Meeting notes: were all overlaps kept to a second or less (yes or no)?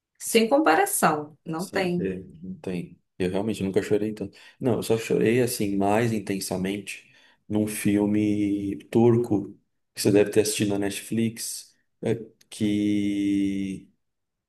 yes